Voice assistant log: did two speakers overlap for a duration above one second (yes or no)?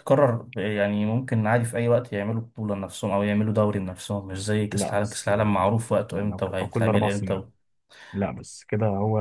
yes